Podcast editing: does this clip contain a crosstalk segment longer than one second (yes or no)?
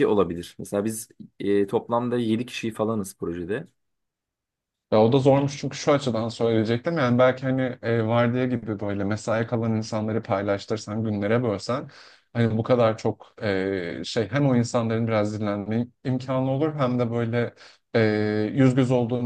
no